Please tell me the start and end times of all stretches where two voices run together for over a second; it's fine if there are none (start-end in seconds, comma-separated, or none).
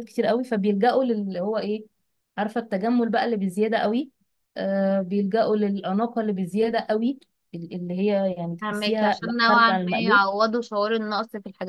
8.6-10.2